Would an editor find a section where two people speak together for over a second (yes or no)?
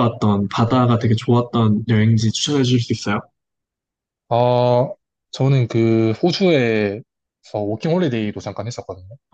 no